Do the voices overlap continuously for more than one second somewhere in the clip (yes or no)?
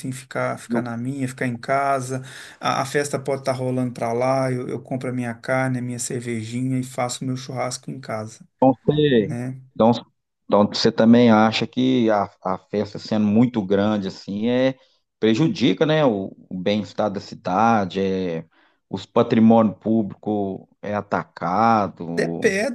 no